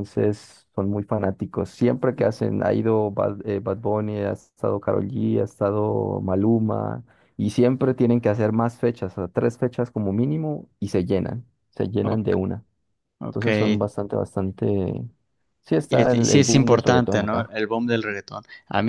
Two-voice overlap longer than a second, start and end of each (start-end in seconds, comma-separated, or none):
15.9-17.5